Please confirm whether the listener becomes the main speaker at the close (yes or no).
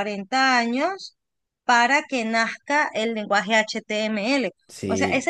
no